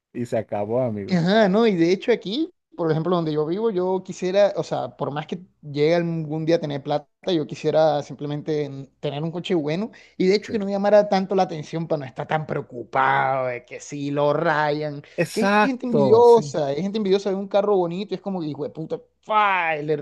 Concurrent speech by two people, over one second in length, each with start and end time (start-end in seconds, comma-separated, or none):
15.2-16.5